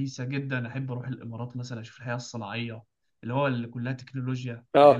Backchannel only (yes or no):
no